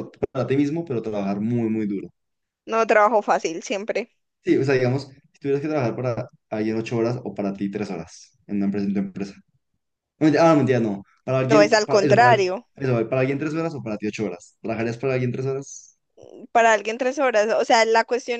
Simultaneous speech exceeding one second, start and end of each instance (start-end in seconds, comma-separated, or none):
11.5-12.7